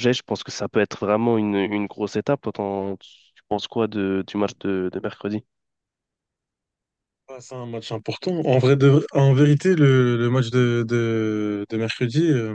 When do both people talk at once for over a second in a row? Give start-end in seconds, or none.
none